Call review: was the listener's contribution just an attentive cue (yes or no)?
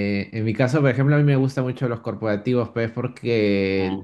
yes